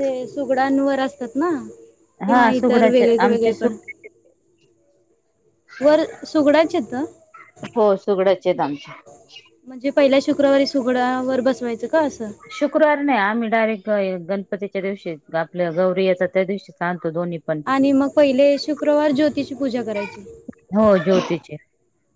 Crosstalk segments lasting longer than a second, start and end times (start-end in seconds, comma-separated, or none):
2.3-3.7